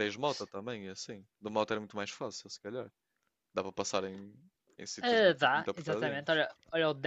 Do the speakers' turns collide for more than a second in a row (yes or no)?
yes